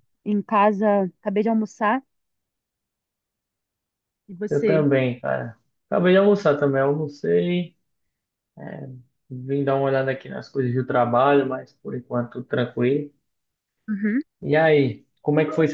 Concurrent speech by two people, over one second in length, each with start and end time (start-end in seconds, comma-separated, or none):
none